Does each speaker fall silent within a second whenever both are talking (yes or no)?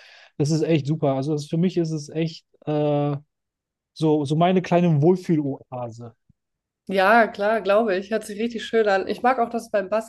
yes